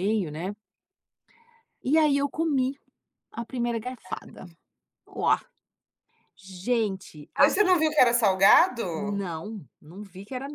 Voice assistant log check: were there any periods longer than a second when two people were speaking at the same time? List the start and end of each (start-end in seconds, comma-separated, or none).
none